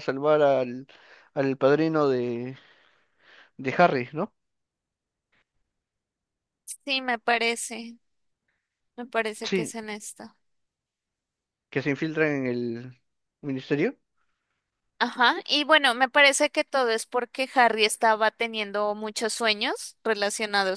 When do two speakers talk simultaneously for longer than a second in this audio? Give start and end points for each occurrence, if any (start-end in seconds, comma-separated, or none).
none